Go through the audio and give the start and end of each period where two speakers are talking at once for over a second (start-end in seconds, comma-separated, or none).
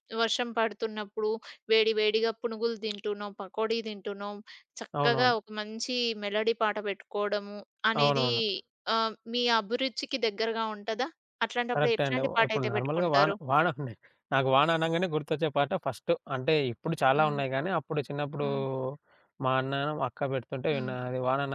11.7-13.3